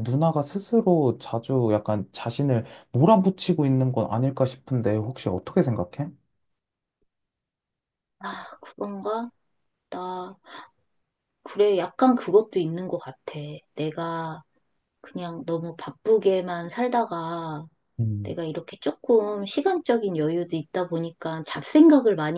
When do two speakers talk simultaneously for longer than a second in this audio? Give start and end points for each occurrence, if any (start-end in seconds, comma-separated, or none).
none